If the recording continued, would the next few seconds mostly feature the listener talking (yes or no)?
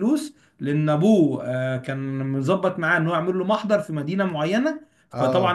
no